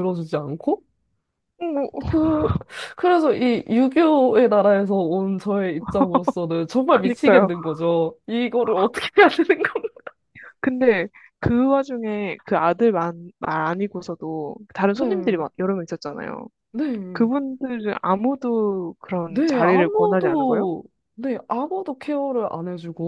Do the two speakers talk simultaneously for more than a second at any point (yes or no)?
yes